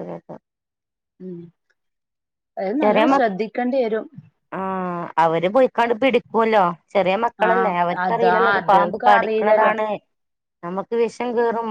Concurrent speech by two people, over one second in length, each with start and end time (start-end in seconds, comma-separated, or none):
7.5-9.7